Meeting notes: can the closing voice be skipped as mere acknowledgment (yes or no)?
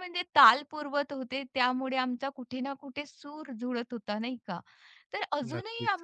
yes